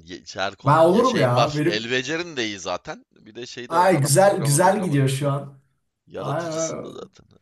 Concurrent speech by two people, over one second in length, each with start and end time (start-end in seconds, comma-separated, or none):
0.6-1.9, 3.7-5.1